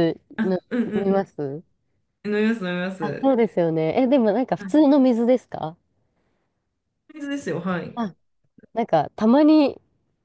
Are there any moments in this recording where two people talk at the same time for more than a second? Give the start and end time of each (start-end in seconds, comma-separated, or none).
none